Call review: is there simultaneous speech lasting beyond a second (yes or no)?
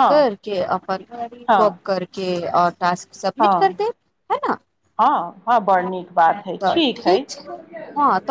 no